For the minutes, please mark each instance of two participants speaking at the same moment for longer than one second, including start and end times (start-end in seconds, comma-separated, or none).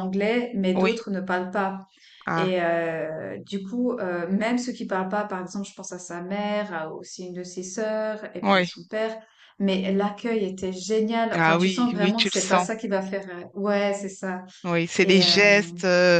11.3-12.7